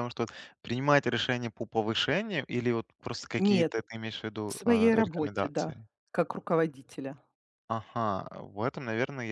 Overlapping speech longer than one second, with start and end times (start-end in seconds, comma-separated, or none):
4.5-5.9